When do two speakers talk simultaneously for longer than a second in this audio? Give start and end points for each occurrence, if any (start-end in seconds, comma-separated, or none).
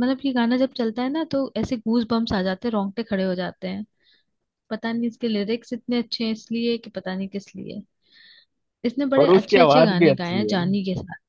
9.2-10.7